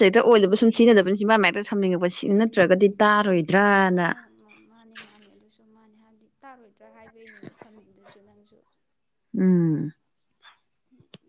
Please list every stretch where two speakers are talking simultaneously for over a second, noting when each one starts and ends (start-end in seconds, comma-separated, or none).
none